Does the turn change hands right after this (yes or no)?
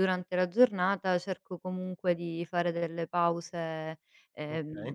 no